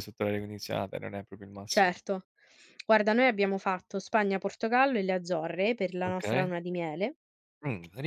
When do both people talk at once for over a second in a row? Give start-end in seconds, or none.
none